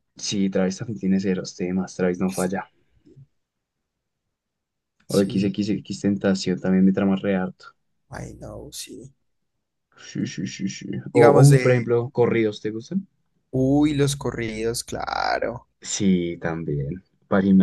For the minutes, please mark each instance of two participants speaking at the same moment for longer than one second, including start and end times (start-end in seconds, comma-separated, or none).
none